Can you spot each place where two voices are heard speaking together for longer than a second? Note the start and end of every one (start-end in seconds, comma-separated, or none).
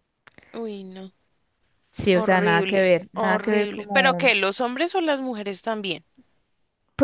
2.1-4.3